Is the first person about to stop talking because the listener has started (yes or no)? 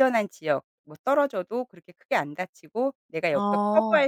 no